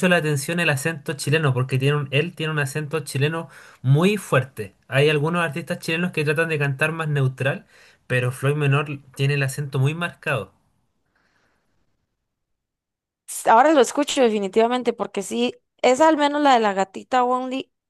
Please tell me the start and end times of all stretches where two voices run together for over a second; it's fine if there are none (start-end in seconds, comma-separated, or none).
none